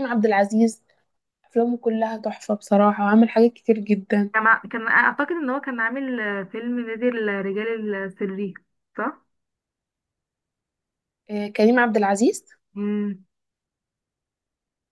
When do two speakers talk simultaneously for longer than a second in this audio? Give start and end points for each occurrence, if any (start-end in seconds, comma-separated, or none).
none